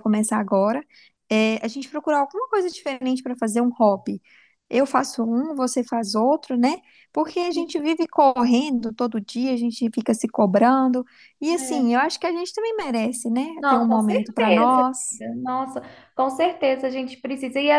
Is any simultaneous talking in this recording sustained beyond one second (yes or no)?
yes